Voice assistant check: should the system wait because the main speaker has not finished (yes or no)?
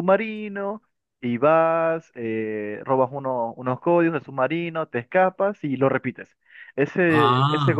yes